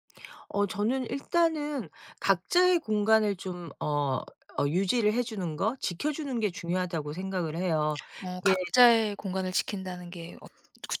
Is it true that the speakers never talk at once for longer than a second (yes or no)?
yes